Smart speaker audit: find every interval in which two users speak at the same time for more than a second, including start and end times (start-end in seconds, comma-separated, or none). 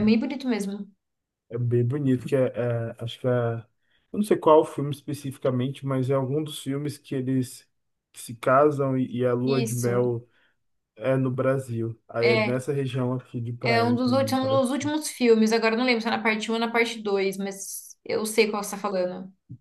13.6-14.9